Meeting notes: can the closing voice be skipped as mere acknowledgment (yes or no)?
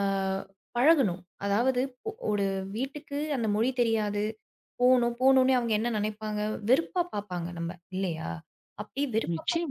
yes